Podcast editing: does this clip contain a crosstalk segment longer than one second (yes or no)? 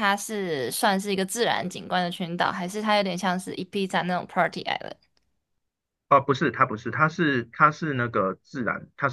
no